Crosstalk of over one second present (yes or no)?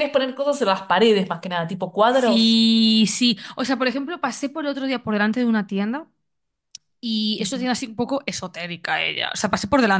no